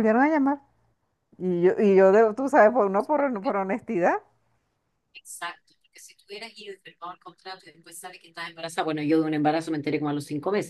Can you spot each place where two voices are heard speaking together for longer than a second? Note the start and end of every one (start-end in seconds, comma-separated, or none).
none